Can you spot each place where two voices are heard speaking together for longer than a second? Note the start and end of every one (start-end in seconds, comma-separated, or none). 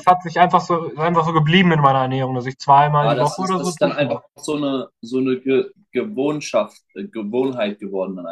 3.0-4.2